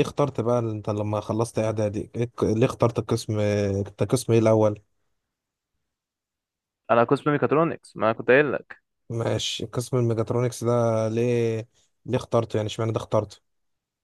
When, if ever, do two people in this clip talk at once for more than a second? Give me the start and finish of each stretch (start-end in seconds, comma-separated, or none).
none